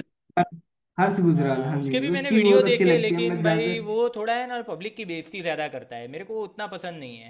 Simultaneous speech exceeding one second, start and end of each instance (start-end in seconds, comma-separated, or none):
1.3-3.7